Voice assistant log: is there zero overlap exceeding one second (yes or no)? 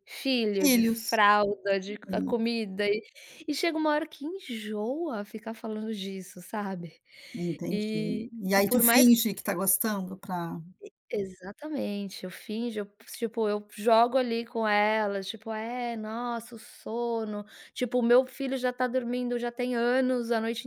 no